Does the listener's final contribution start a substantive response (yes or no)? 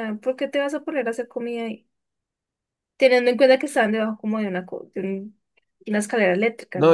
yes